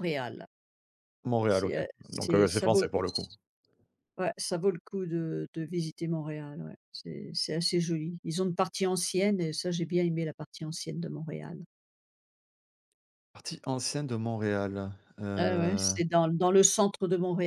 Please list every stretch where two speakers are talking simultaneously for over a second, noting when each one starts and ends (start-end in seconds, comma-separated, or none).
1.5-2.9